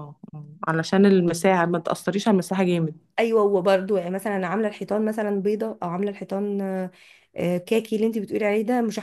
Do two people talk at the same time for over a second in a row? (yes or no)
no